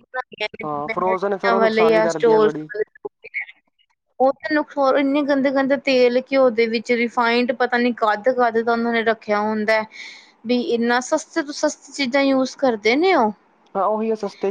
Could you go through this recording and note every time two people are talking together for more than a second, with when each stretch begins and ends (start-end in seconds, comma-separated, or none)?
0.6-2.5